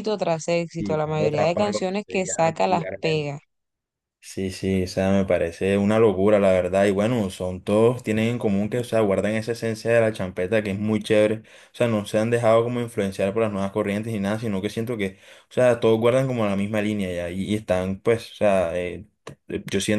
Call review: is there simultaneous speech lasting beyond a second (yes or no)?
yes